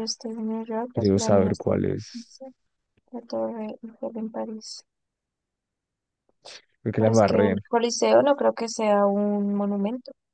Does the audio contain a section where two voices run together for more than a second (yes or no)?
yes